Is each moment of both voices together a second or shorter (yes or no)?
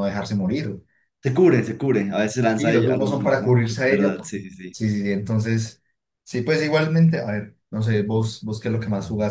no